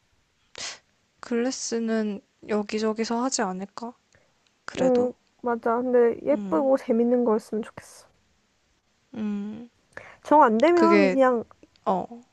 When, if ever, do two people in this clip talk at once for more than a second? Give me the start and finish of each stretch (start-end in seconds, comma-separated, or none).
none